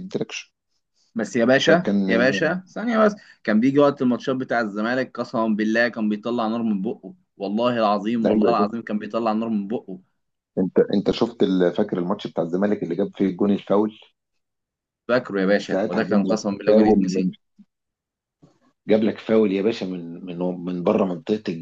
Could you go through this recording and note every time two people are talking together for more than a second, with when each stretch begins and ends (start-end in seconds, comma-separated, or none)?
15.7-17.3